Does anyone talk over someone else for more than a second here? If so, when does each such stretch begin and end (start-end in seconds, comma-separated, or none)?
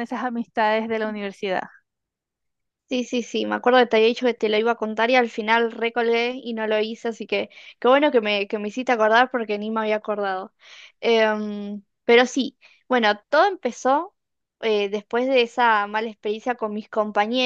none